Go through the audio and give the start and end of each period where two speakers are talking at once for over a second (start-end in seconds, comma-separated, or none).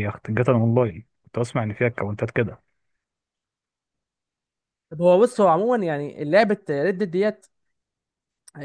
none